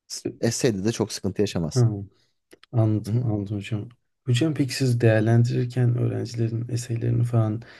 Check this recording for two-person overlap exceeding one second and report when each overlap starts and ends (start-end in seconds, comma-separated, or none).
none